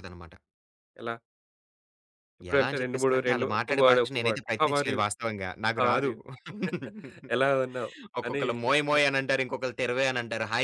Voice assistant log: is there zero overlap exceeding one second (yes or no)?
no